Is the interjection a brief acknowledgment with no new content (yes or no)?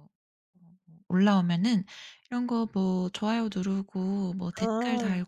yes